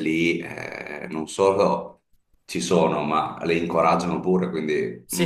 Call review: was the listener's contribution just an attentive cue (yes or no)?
no